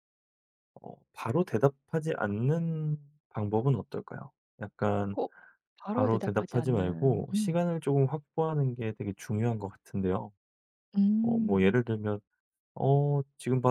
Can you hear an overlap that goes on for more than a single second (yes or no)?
yes